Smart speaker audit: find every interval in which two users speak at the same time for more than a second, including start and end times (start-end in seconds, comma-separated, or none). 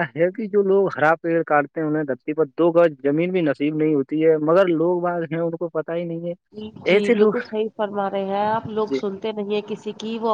none